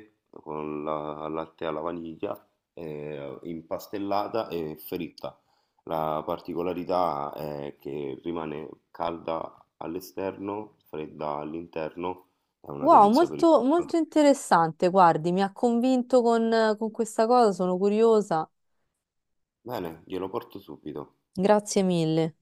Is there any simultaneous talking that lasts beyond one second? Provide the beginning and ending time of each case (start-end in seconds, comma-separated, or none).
12.8-14.0